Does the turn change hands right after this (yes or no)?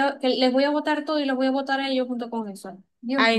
yes